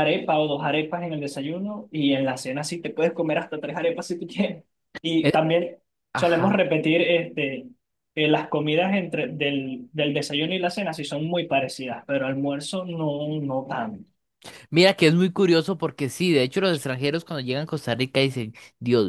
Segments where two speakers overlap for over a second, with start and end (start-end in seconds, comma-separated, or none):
none